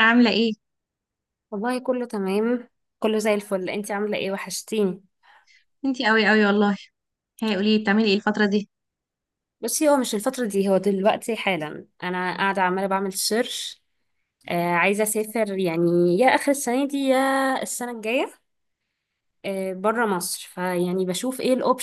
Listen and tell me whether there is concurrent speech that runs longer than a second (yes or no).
no